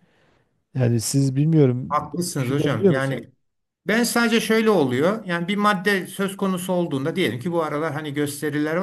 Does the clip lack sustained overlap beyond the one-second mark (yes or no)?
no